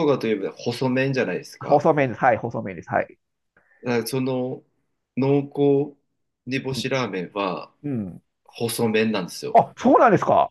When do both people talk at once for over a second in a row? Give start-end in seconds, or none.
none